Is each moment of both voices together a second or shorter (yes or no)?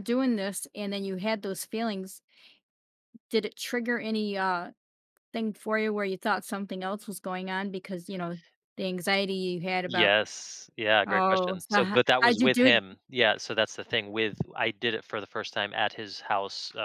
no